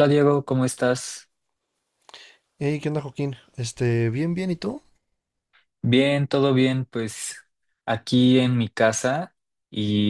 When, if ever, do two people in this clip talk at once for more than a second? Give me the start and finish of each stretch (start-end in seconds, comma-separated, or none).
none